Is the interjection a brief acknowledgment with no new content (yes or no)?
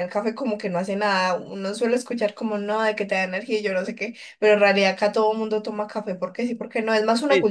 no